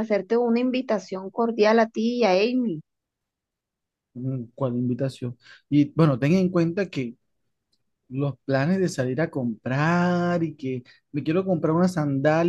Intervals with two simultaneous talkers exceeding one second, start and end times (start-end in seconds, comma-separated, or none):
none